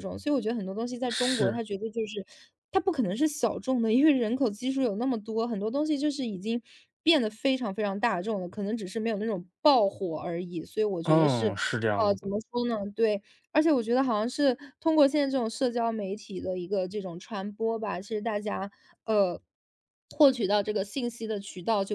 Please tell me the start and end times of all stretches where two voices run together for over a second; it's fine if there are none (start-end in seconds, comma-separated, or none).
11.0-12.3